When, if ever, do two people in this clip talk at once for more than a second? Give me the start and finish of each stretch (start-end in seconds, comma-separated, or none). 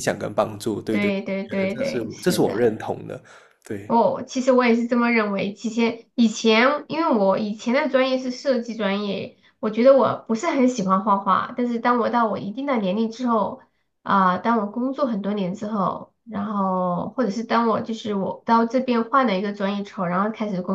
0.9-2.7